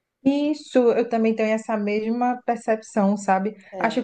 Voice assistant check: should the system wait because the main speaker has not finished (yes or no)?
yes